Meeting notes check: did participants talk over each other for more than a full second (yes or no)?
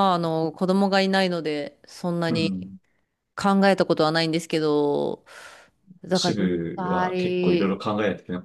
yes